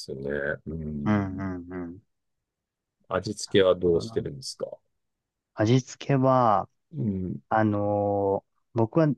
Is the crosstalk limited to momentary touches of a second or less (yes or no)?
yes